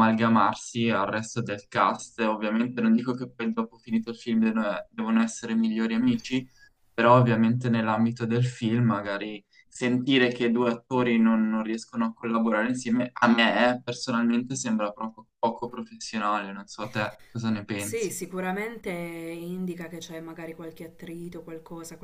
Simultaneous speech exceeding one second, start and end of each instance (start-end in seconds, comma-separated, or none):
none